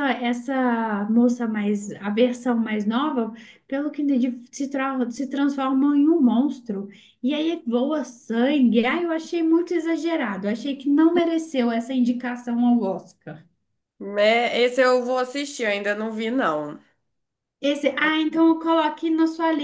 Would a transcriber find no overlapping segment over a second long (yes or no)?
yes